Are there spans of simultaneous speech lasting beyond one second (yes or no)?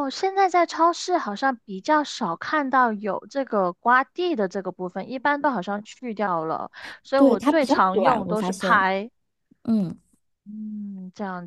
yes